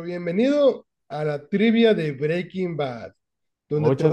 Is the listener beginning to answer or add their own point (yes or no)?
no